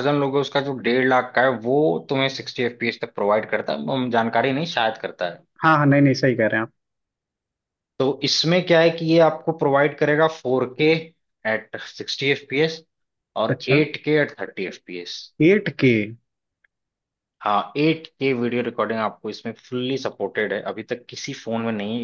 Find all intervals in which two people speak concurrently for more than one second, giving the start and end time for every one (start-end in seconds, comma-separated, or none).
none